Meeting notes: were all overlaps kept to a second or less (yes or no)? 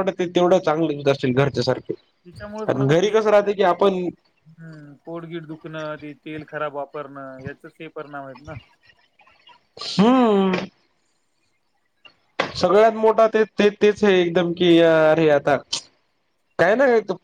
no